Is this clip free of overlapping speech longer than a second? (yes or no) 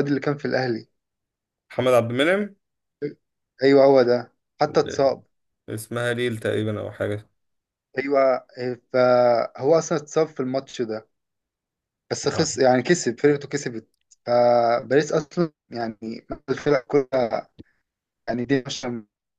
yes